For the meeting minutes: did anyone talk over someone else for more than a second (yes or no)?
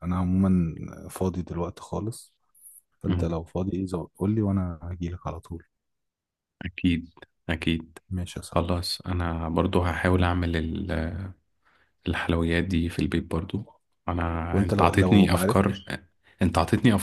yes